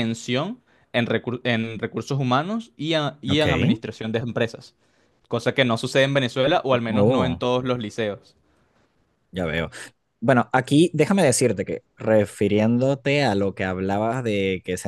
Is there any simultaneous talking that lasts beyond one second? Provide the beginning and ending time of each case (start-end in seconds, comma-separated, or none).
none